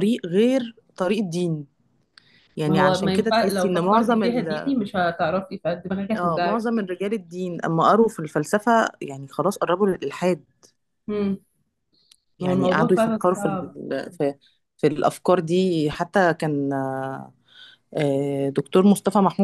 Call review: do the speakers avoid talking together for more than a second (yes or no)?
no